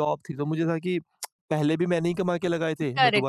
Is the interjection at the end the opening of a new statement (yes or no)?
yes